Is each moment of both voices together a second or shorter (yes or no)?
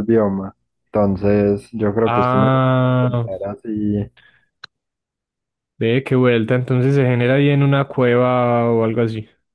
no